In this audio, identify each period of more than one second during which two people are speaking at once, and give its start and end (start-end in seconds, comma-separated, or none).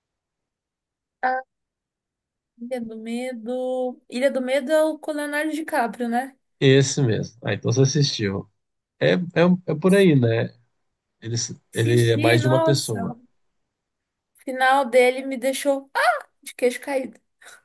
11.7-13.2